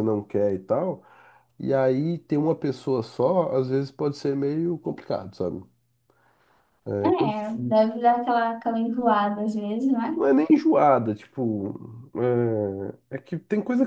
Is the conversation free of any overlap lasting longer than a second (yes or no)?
yes